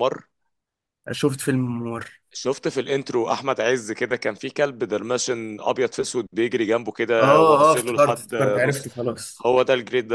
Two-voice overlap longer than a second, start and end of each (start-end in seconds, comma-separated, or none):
7.2-8.9